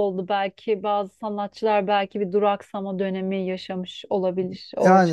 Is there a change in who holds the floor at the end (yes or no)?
yes